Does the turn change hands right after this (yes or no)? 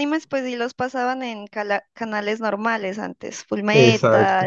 no